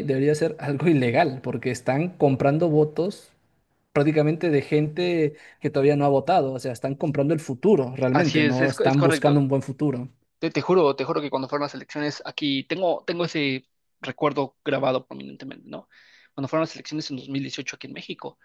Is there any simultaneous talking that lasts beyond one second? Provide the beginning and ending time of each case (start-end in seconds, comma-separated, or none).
8.1-9.4